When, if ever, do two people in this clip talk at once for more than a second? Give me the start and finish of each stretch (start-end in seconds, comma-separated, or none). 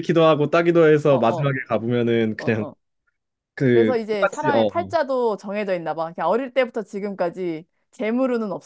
3.7-4.9